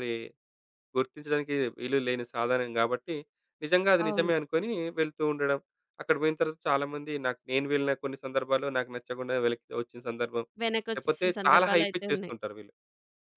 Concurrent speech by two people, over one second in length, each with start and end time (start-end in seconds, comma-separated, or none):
10.9-12.3